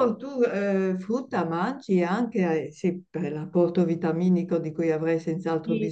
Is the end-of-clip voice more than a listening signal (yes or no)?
yes